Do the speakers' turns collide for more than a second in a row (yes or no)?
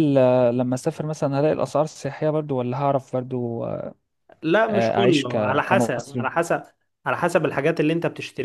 yes